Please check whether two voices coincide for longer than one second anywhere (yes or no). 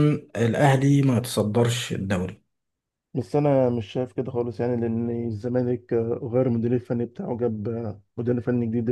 no